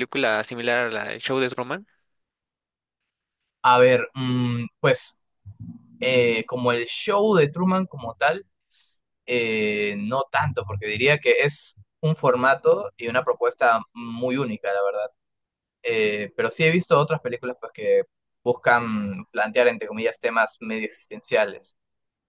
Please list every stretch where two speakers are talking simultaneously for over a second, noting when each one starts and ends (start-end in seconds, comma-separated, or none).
none